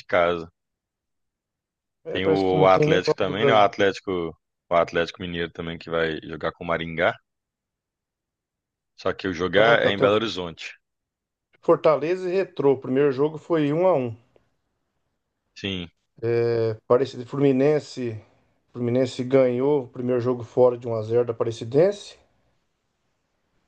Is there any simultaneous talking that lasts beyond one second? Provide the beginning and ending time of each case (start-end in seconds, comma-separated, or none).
2.1-3.7